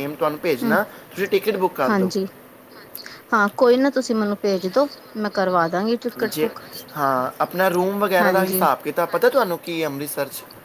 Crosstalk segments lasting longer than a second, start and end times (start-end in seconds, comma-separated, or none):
none